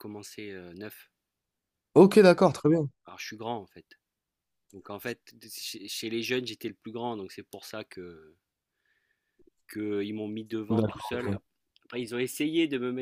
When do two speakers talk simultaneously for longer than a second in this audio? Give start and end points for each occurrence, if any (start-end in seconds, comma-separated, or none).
none